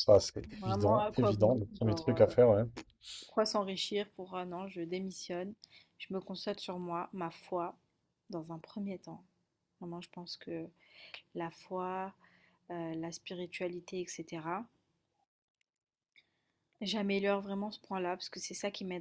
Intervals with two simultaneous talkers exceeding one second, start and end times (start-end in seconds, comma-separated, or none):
0.6-2.3